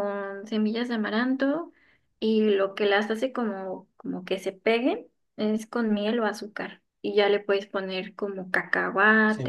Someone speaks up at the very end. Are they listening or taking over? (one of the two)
taking over